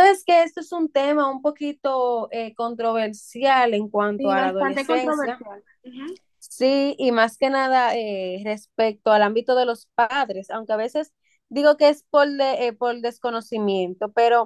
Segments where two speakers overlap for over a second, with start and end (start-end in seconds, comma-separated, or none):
4.2-5.4